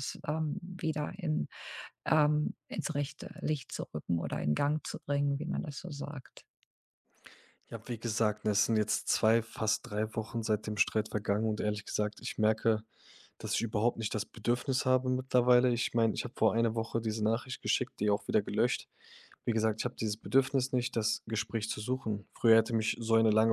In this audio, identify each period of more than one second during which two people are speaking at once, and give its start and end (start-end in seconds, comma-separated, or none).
none